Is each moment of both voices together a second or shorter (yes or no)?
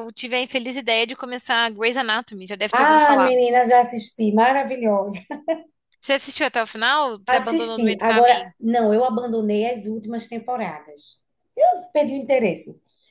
no